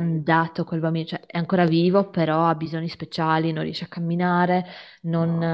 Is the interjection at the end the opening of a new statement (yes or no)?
no